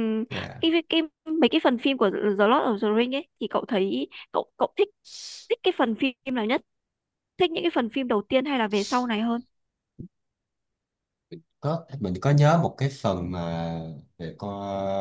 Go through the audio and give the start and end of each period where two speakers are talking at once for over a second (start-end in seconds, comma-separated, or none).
none